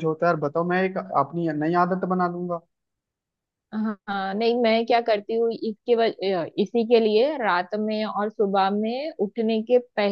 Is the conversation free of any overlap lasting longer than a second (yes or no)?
yes